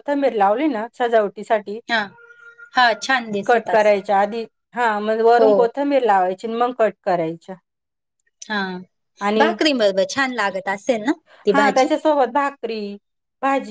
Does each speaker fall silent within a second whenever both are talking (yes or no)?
yes